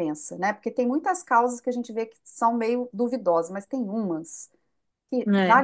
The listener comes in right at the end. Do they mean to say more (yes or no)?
no